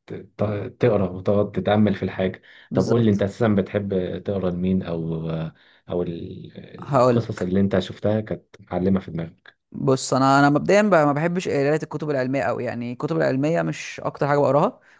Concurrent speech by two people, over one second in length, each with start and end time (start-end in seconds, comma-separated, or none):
none